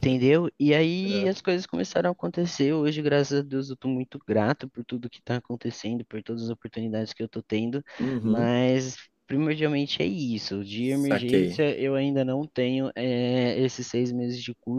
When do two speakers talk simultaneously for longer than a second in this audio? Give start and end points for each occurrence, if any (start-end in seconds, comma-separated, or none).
none